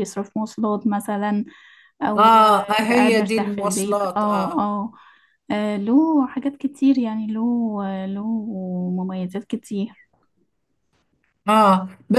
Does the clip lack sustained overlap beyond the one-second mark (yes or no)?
no